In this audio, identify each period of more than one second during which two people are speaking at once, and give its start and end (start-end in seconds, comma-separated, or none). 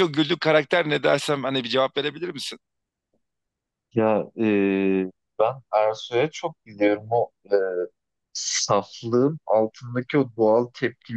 none